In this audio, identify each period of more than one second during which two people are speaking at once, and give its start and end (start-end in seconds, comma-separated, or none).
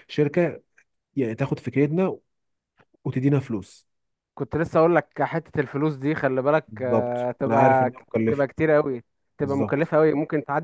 6.7-8.5